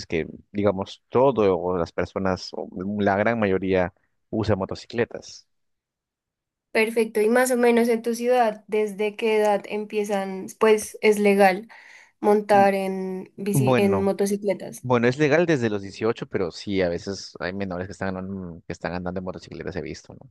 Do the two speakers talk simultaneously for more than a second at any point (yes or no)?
no